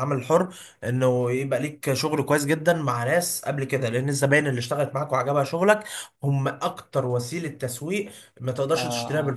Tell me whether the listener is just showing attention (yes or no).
no